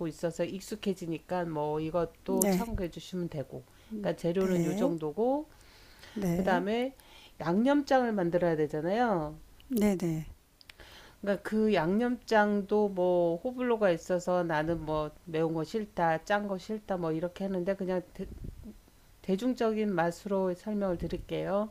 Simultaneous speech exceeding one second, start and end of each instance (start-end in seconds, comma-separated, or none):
none